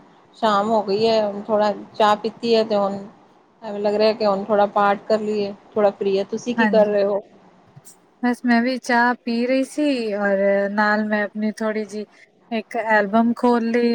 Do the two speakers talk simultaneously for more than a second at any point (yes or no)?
no